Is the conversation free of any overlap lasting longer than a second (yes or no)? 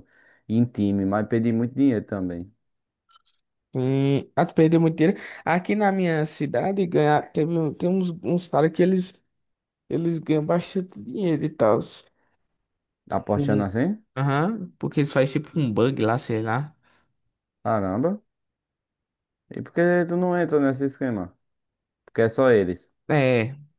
yes